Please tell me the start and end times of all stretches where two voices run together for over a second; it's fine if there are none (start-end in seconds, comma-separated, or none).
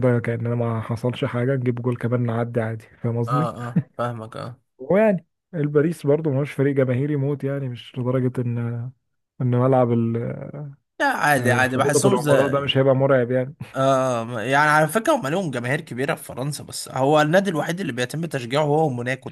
11.4-12.7